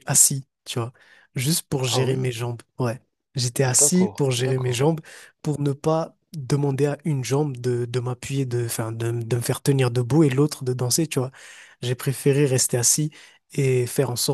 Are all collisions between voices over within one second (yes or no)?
no